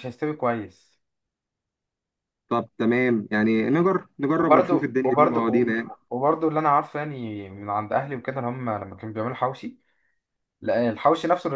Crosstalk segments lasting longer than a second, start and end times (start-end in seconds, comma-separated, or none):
4.4-5.7